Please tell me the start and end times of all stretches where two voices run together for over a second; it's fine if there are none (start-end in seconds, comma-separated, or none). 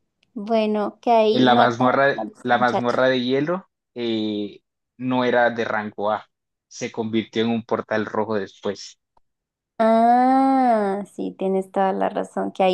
1.3-3.0